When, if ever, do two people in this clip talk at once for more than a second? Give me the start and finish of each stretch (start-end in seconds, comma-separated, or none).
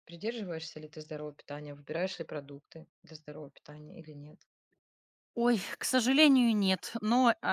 none